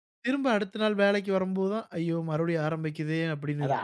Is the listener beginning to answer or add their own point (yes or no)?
yes